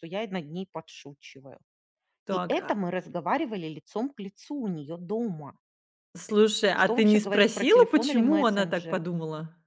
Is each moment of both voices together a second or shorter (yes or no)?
no